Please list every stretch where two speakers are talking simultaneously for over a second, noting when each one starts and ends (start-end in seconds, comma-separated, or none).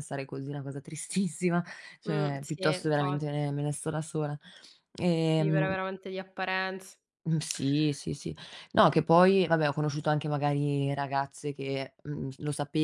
2.1-3.3